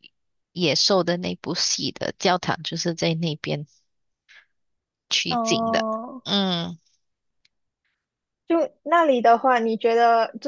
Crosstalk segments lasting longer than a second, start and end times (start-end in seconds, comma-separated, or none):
none